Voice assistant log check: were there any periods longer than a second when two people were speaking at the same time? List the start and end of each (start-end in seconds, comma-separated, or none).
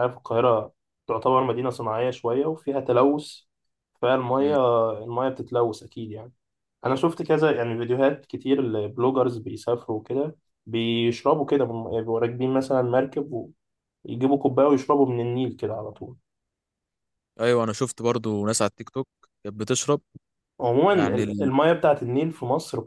none